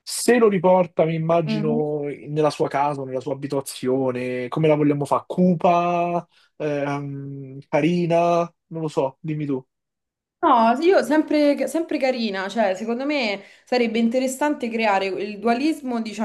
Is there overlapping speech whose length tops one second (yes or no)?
no